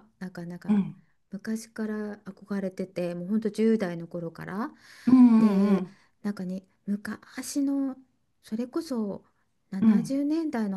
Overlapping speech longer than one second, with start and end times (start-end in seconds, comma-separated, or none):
none